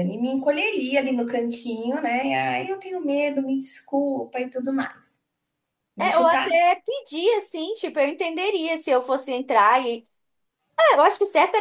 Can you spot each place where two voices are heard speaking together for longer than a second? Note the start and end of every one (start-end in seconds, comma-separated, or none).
none